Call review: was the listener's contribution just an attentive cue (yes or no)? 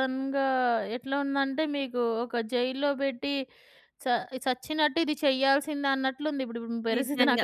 no